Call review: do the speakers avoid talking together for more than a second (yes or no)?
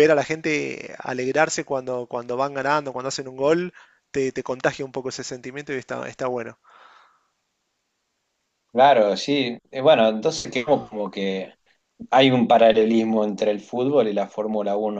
yes